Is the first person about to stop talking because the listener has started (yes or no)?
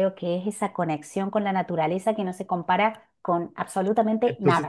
yes